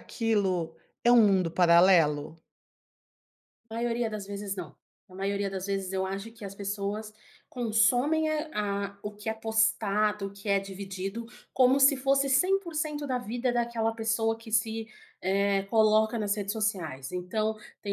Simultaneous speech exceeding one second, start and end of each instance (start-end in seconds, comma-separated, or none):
none